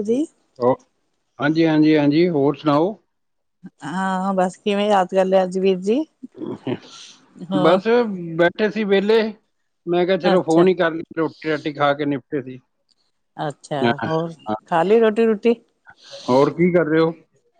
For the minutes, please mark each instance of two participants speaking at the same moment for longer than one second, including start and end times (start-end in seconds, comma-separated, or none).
none